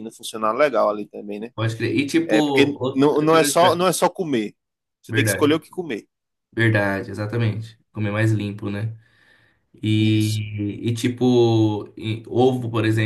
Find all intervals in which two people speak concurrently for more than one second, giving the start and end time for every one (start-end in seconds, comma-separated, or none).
2.2-3.8